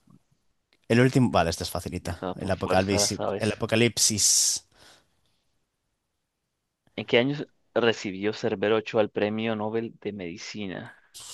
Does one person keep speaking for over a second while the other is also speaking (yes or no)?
yes